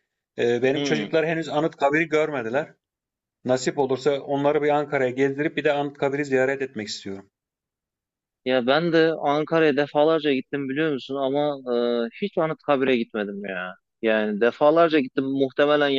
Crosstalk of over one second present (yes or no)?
no